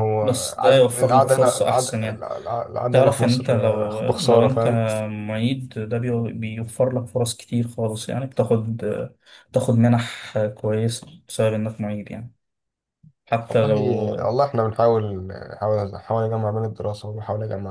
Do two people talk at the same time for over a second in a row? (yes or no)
yes